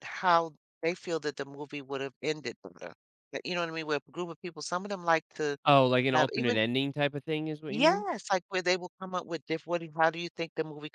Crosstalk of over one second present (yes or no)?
no